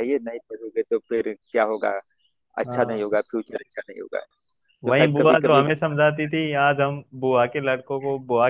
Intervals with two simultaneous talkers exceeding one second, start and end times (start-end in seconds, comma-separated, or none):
4.8-6.6